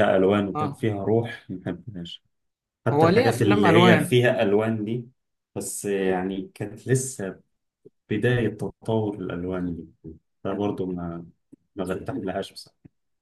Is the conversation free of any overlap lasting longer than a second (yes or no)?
no